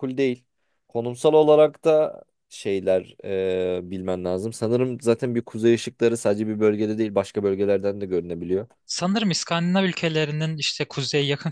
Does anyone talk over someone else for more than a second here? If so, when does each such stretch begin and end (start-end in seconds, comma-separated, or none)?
none